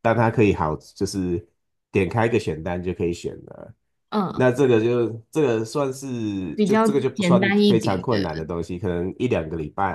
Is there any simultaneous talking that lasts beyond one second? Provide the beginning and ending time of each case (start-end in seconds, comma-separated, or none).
6.5-8.3